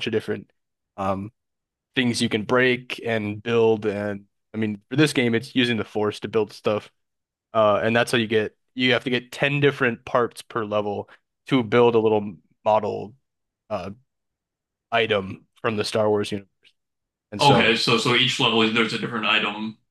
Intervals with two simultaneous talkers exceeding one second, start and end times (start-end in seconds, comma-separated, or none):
none